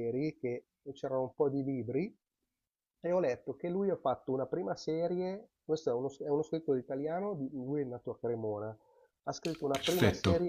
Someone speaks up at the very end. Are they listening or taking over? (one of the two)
listening